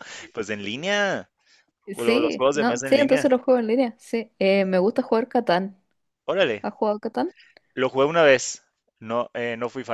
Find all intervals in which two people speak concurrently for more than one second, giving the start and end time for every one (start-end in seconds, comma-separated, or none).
2.0-3.3